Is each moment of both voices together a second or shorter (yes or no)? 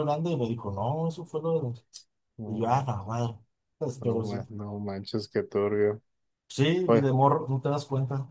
yes